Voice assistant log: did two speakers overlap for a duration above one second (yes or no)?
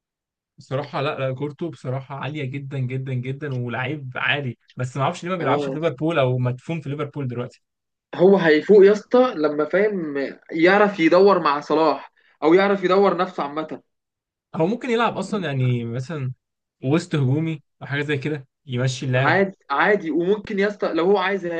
no